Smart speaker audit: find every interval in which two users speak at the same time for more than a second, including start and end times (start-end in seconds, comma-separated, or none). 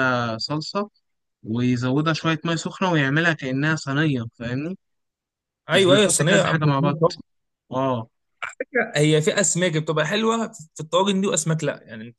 5.7-7.0